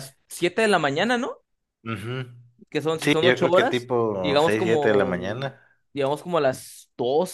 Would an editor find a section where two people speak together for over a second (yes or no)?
yes